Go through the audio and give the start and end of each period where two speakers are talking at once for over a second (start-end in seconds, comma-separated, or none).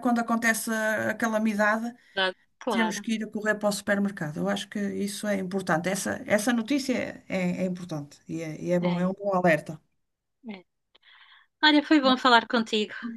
none